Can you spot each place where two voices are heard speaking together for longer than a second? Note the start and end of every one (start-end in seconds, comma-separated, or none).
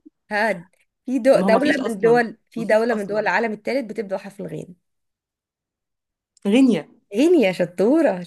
1.3-3.3